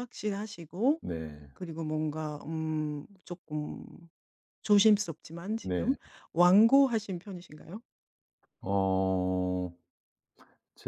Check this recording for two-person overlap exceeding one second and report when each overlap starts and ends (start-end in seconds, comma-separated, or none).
none